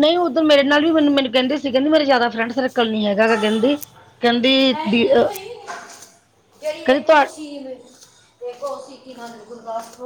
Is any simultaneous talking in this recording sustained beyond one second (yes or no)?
no